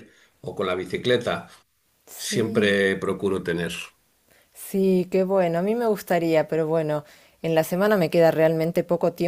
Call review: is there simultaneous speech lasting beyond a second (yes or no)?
no